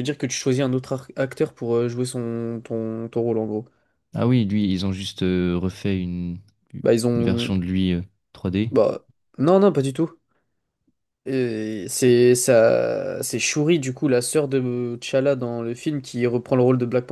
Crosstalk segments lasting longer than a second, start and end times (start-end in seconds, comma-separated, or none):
none